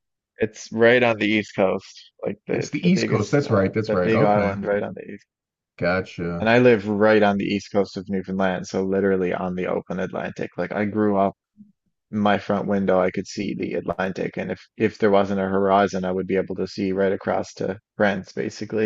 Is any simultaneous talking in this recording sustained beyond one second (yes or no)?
yes